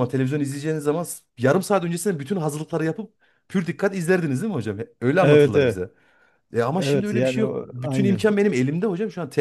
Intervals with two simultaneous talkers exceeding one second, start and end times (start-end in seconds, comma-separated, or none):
6.8-8.3